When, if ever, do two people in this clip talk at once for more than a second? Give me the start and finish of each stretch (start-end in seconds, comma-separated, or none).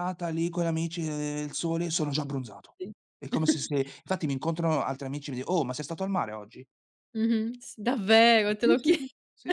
none